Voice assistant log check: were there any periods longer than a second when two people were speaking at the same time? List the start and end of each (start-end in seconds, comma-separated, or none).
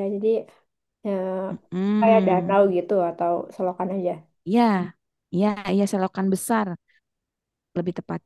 none